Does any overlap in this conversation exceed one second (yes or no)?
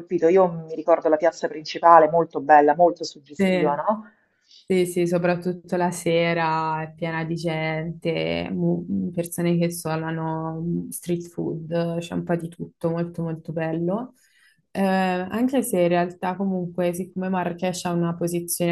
no